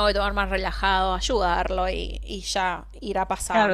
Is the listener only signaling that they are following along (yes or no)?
no